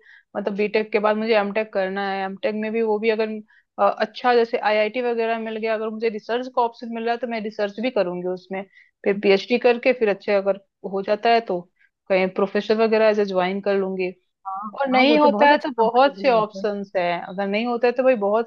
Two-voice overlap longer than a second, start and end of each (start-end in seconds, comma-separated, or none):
14.8-16.7